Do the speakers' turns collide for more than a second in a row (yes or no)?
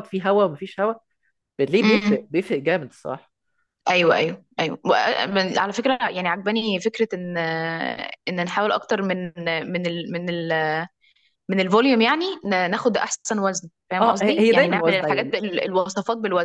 yes